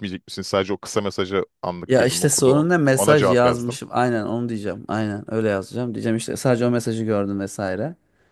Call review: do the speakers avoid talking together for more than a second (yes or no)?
no